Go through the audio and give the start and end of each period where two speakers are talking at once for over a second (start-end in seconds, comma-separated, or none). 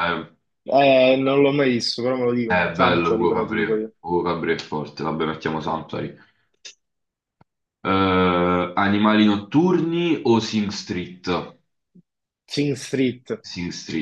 2.4-3.9